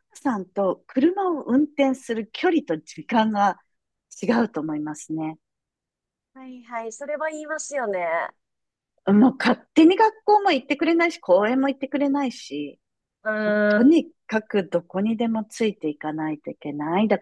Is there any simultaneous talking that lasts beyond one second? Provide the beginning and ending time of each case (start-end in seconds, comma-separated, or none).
none